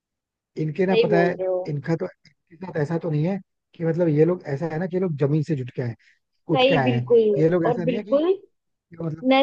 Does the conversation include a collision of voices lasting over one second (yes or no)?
yes